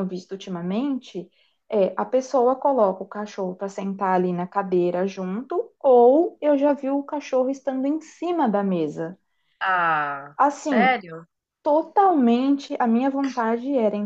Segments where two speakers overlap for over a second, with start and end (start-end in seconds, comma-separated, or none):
none